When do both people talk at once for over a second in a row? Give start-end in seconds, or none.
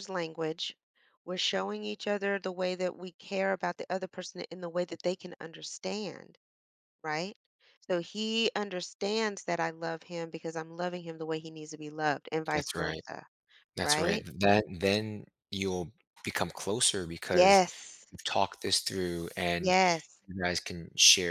none